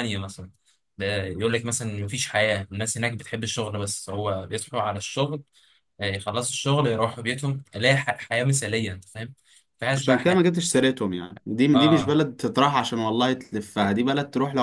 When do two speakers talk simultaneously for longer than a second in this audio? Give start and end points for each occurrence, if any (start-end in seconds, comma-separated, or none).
none